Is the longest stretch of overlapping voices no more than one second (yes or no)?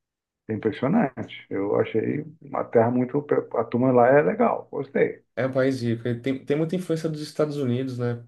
yes